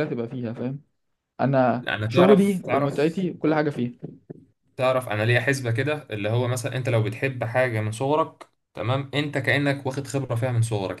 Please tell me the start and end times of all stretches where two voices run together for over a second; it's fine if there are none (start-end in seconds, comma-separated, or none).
1.9-3.2